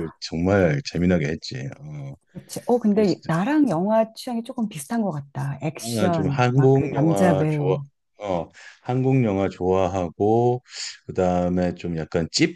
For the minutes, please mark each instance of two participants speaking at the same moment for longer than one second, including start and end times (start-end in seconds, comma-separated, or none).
5.8-7.8